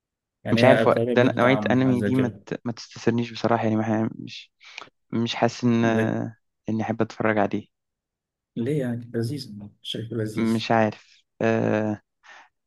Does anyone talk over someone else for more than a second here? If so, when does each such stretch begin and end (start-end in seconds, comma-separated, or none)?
0.5-2.5